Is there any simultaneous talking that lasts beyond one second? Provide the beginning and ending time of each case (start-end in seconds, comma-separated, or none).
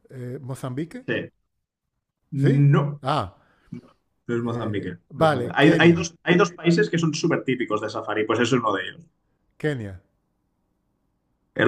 4.5-6.0